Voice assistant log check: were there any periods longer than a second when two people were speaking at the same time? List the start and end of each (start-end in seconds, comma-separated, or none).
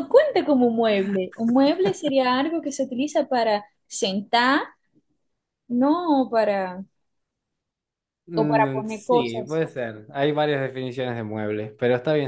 8.4-9.6